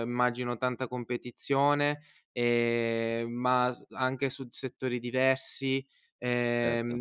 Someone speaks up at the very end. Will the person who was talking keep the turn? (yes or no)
yes